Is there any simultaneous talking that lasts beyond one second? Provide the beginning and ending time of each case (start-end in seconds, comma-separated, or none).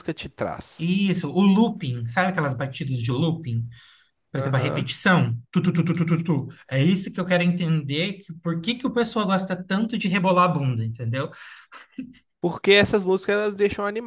none